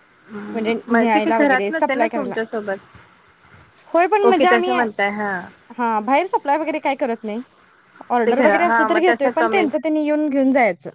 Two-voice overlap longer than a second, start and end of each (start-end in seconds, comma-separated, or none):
0.5-2.3, 8.2-9.7